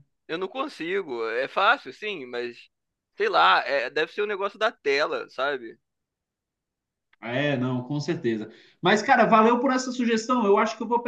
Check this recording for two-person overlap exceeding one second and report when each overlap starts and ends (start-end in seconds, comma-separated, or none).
none